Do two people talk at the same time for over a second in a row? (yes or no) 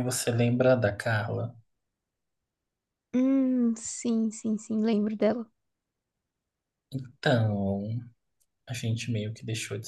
no